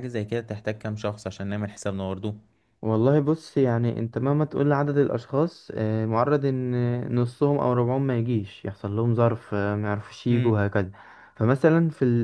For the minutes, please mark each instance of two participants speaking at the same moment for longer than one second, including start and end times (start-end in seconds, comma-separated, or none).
none